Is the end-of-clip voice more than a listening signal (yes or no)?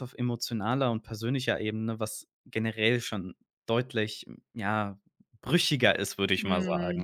yes